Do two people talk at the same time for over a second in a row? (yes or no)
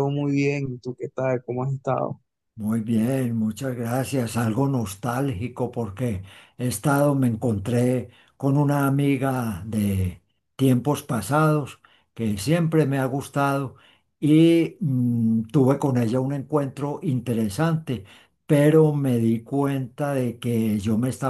no